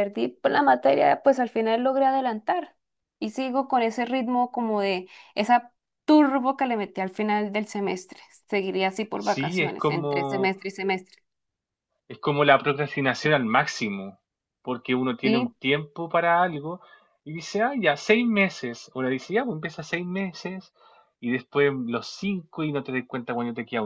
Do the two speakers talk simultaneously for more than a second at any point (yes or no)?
yes